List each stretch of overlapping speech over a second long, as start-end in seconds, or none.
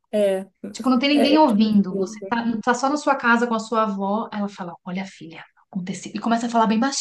1.1-2.4